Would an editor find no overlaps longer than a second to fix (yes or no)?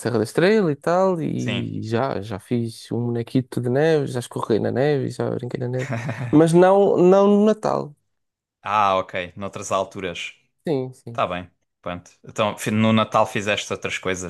yes